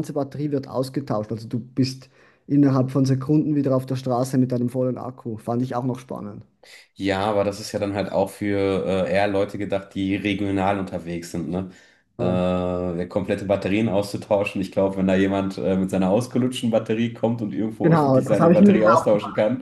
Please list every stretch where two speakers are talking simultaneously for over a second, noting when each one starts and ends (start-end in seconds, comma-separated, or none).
17.8-19.1